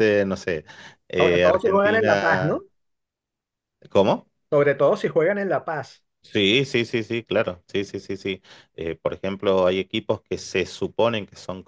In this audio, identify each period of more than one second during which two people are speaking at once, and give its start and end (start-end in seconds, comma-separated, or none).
1.1-2.6